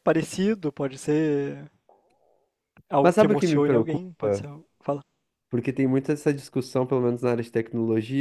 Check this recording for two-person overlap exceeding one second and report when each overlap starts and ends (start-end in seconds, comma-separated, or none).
3.0-4.5